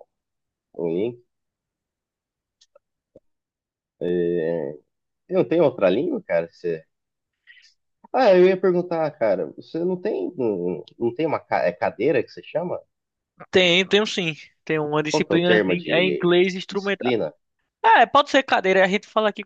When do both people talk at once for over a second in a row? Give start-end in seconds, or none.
15.1-17.1